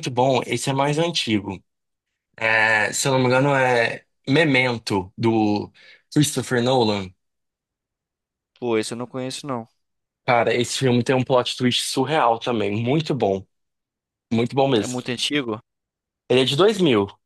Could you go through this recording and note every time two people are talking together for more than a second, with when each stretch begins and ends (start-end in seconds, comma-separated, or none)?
none